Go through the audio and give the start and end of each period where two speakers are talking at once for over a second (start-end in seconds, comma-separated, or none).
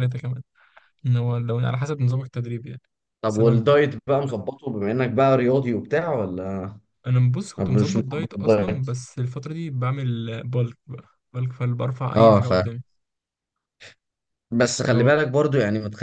7.6-8.9